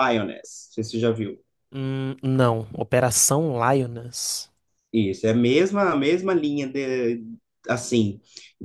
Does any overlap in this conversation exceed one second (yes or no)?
no